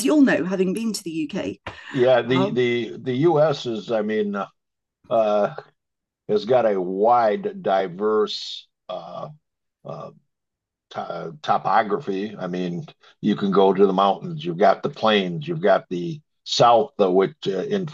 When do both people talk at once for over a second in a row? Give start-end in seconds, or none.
none